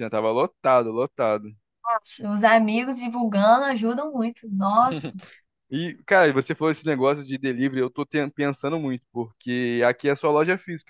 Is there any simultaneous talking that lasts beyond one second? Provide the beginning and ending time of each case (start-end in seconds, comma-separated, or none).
none